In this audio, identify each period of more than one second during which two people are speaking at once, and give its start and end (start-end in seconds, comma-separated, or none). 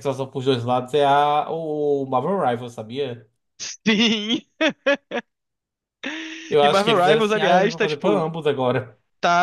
6.6-8.2